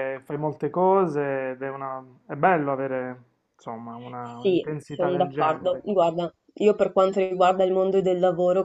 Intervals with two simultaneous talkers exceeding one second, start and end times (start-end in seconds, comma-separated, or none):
4.4-5.8